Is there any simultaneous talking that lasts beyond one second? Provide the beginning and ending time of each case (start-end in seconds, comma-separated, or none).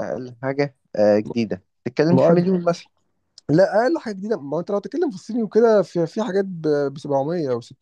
none